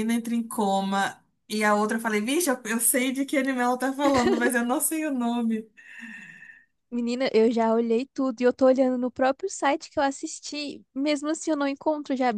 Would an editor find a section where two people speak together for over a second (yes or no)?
no